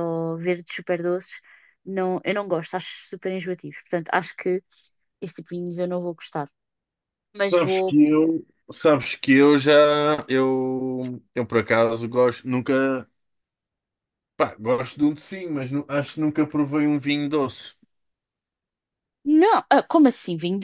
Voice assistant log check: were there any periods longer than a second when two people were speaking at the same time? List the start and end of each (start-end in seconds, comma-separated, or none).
none